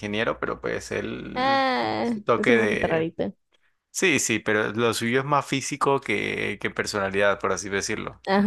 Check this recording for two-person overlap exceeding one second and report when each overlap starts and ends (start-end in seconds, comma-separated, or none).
1.3-3.1